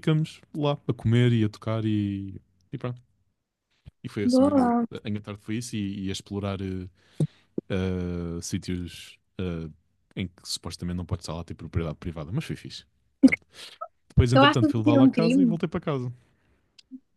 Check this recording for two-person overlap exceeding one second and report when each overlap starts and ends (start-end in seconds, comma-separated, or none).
14.3-15.6